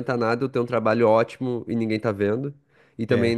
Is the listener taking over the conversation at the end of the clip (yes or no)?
no